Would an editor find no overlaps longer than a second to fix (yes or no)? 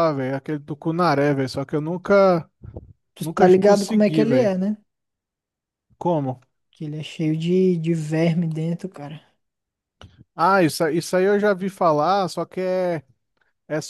no